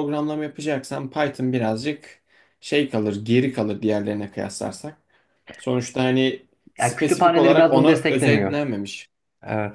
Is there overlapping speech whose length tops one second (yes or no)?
yes